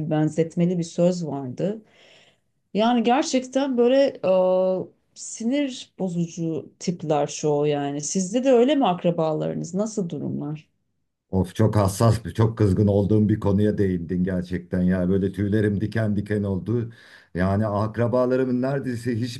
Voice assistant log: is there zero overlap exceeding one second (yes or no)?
yes